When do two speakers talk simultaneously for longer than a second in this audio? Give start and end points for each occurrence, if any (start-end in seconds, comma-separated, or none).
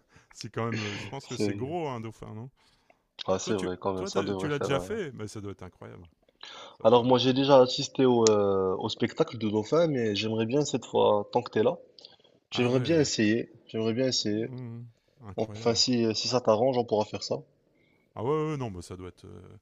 3.4-5.0